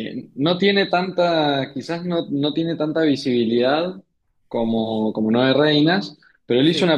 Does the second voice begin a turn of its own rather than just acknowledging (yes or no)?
no